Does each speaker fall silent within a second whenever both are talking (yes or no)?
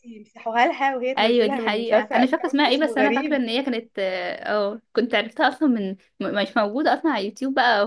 no